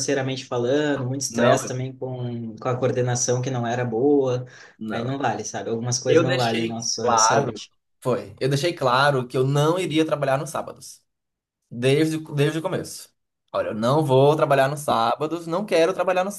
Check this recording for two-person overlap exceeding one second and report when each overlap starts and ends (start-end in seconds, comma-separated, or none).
6.1-7.6